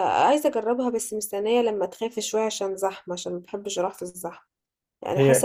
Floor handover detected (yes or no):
no